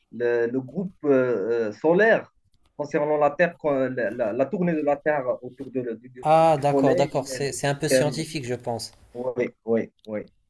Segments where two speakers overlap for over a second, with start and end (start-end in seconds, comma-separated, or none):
6.2-8.2